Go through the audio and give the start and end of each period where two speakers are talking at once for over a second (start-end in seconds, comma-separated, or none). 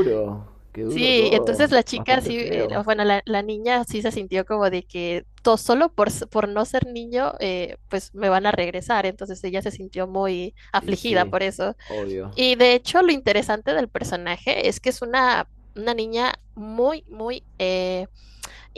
0.9-2.8